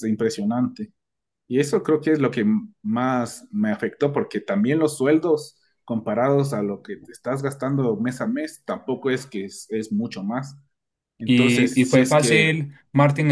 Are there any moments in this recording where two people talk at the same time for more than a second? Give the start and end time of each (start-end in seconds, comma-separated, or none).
11.2-12.6